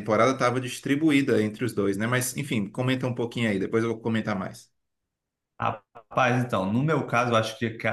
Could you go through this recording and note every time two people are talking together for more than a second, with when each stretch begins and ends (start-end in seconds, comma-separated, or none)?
none